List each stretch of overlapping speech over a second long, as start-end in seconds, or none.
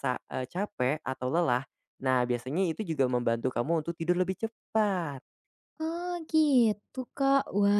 none